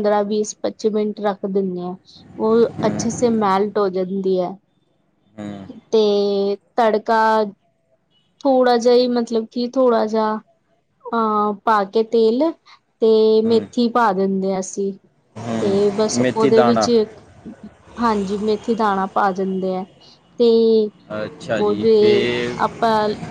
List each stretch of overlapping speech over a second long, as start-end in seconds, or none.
15.6-16.9